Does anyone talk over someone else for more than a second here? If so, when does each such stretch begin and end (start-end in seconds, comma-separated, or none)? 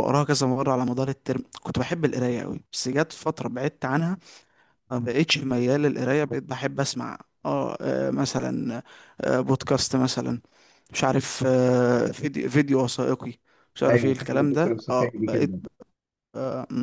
13.9-15.5